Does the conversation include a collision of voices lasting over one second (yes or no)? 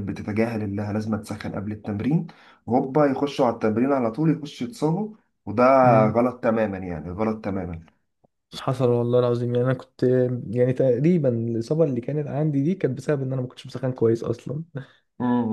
no